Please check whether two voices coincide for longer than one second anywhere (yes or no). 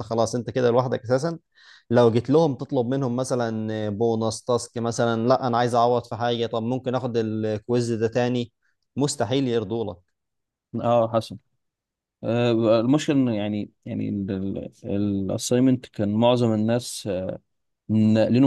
no